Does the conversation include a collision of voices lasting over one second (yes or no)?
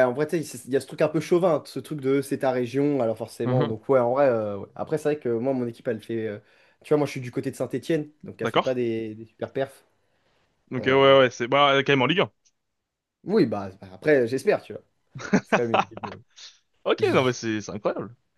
no